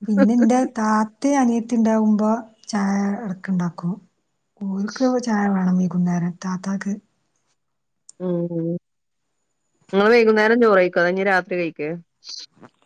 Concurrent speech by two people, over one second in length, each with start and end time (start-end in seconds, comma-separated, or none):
none